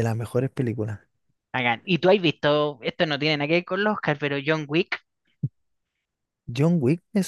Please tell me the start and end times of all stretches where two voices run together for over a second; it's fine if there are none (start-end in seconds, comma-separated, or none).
none